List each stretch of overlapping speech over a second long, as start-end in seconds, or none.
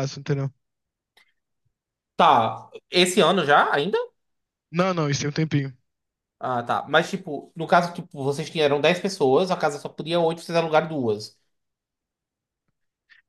none